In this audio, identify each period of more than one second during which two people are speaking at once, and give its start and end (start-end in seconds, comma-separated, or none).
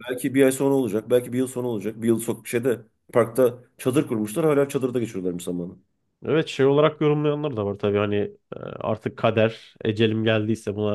none